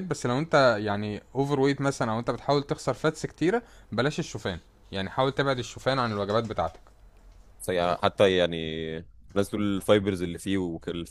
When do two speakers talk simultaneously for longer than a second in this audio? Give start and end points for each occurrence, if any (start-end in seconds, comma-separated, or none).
none